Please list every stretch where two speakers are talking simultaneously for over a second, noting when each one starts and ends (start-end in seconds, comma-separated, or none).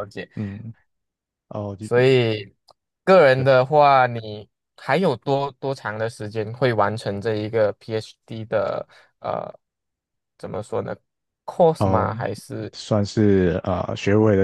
none